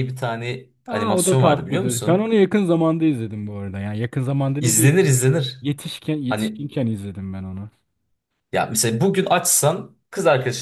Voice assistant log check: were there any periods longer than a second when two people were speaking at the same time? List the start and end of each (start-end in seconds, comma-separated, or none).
0.9-2.3